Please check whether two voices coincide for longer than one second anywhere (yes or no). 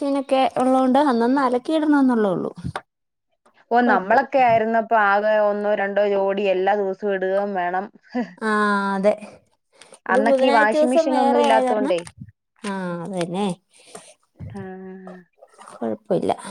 yes